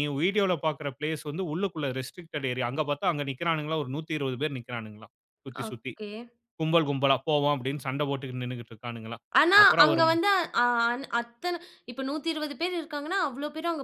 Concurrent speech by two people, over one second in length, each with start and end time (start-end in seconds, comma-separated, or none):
none